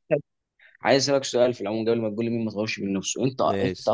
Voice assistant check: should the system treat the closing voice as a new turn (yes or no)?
no